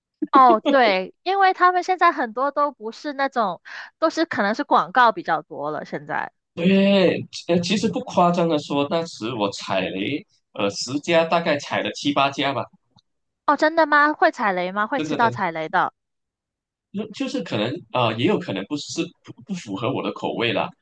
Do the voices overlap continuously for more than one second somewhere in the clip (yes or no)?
no